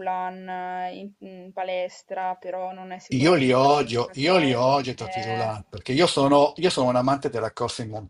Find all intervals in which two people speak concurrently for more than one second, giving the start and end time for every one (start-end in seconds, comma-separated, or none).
3.2-5.5